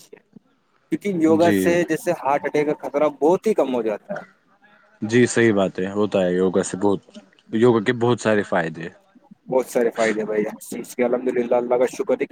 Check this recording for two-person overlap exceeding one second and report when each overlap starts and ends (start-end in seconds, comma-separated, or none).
none